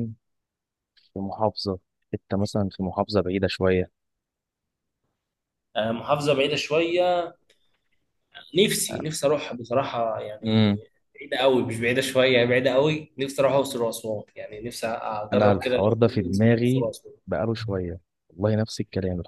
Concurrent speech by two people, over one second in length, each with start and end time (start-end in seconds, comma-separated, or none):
15.3-16.9